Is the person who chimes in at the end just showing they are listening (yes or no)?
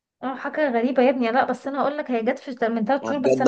no